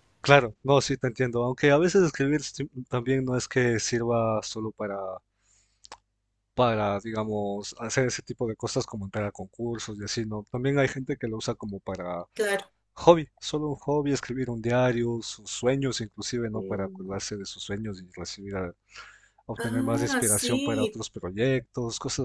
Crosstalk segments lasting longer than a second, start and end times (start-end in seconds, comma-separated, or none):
19.6-21.0